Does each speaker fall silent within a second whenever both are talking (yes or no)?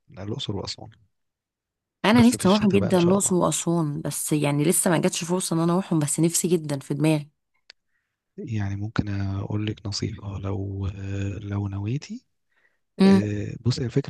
no